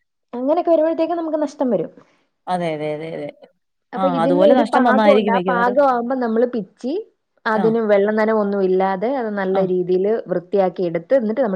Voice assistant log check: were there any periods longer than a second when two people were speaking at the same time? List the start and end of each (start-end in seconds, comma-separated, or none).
4.0-5.8